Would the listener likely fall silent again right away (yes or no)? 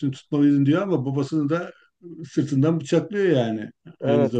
no